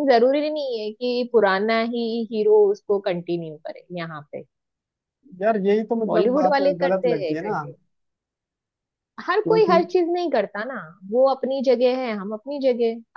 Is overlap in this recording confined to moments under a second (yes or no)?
no